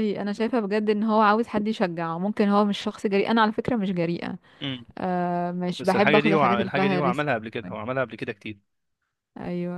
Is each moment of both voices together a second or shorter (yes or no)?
no